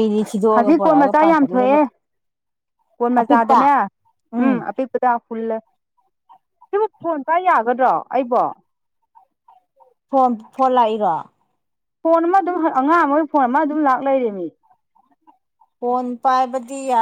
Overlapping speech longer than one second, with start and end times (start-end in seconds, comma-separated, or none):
0.6-1.8